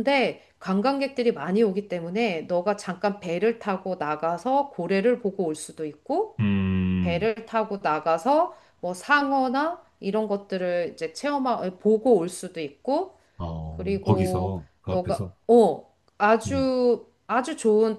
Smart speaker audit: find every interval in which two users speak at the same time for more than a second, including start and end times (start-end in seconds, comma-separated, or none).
13.8-15.3